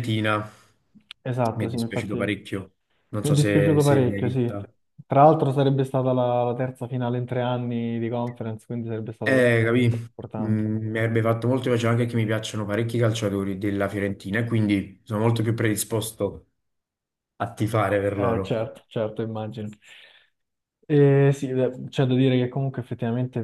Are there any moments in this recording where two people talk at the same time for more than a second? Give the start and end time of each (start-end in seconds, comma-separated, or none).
1.5-4.6